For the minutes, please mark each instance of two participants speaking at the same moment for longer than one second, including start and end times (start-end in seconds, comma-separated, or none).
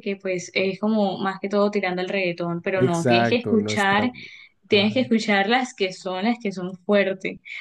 2.7-4.1